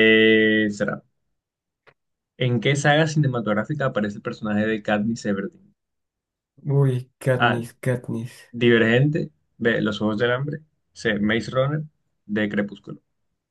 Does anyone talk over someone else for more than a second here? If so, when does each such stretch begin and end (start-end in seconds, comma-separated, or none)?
none